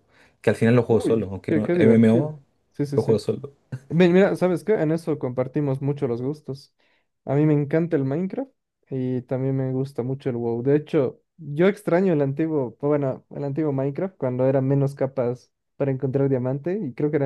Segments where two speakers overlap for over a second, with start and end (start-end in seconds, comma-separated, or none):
0.9-2.3